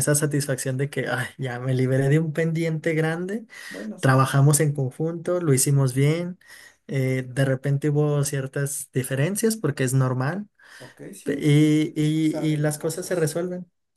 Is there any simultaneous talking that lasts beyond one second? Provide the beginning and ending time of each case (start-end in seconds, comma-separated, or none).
11.2-13.3